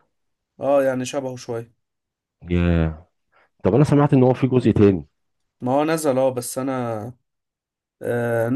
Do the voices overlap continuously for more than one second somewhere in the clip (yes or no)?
no